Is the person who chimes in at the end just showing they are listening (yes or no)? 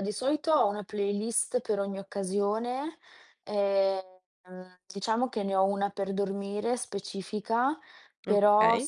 yes